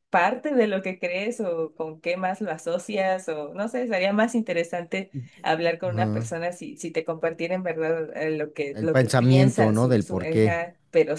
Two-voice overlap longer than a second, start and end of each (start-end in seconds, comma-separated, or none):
8.7-10.6